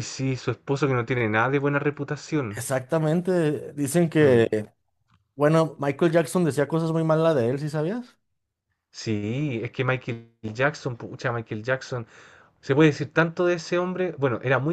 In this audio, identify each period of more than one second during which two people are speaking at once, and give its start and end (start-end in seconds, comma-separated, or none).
none